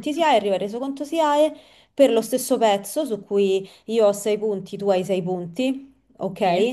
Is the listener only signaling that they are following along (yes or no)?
yes